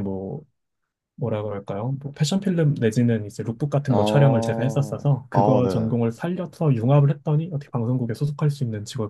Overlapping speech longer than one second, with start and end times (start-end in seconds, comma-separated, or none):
3.9-5.9